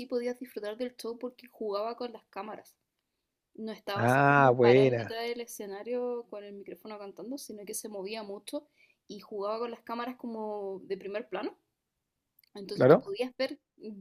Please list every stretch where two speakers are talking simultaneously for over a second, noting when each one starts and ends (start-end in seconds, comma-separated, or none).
3.9-5.2